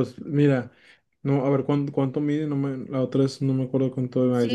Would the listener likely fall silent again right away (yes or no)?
no